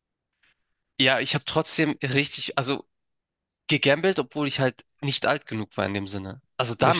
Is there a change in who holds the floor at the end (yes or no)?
no